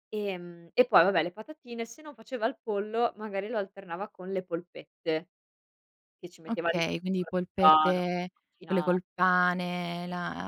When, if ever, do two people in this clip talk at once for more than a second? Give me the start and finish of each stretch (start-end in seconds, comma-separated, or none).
6.5-8.0